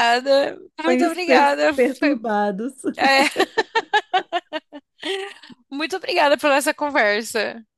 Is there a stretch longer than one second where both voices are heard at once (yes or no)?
yes